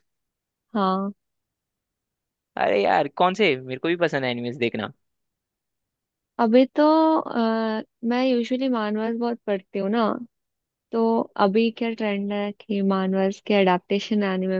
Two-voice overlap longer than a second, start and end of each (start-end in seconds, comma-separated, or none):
none